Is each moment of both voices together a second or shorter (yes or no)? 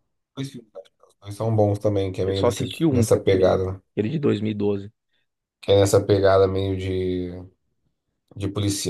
no